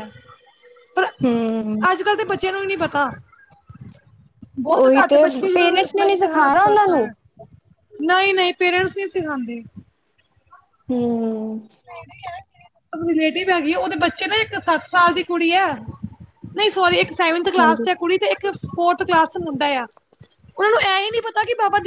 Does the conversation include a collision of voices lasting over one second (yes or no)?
yes